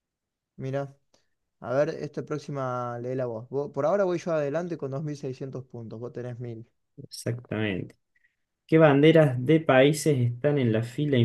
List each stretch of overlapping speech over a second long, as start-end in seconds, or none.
none